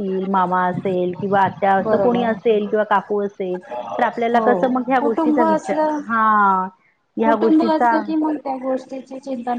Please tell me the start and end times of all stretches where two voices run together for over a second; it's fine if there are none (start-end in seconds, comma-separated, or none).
none